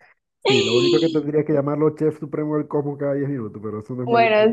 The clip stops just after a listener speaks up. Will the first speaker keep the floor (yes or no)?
no